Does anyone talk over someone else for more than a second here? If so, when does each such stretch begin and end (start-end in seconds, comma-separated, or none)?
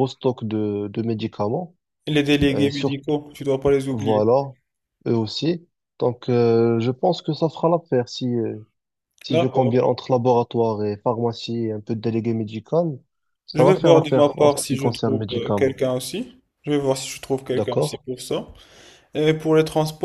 13.5-15.8